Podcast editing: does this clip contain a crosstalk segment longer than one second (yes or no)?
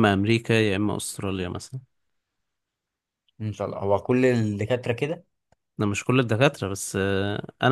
no